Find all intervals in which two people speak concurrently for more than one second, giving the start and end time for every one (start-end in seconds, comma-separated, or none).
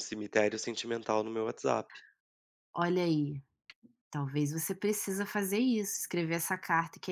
none